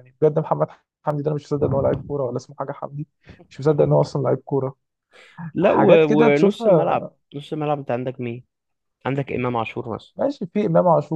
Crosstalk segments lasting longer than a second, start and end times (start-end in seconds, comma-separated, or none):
5.6-7.1